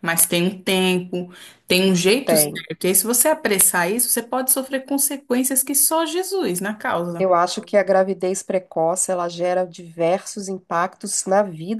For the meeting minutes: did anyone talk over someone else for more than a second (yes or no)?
no